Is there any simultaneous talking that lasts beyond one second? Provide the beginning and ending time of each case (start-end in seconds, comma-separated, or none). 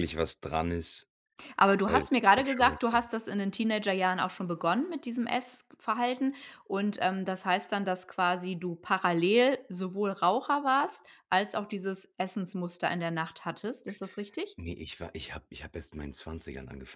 1.8-3.1